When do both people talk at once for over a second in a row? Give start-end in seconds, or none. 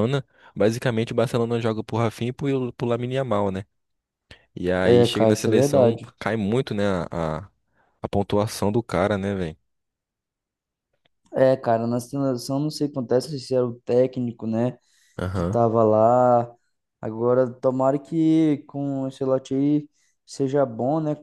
4.8-6.1